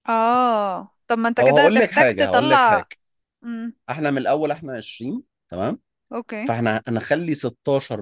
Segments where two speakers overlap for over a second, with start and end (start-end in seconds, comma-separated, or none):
1.4-2.9